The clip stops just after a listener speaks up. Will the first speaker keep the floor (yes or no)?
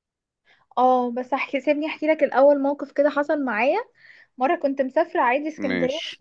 yes